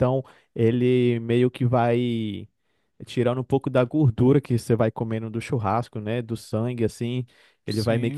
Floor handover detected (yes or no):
no